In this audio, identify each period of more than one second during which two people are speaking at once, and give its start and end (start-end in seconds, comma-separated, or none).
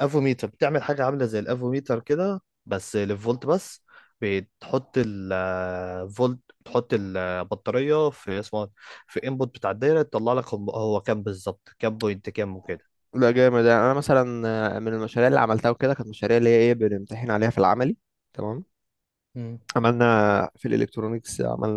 none